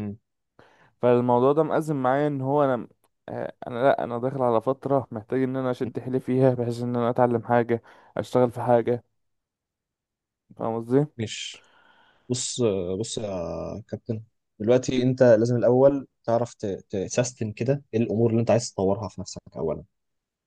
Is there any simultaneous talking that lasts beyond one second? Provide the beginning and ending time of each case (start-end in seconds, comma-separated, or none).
none